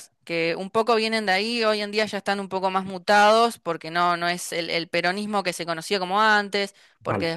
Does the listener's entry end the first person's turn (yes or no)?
no